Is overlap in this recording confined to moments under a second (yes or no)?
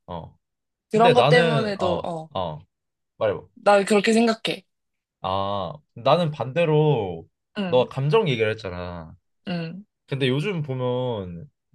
no